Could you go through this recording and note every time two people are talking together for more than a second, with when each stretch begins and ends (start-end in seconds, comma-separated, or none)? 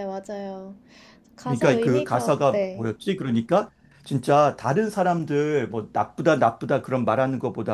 1.4-2.9